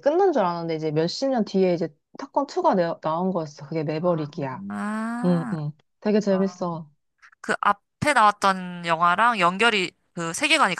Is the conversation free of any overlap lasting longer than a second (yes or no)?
yes